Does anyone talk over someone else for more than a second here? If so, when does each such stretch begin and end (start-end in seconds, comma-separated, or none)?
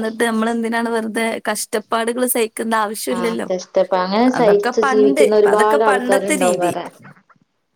4.9-6.7